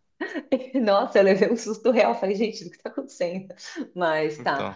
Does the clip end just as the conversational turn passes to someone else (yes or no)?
no